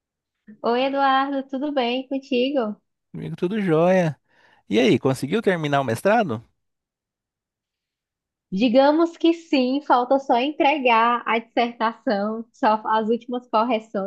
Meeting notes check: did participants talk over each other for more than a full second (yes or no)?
no